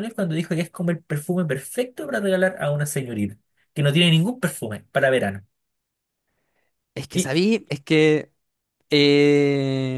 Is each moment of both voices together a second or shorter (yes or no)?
yes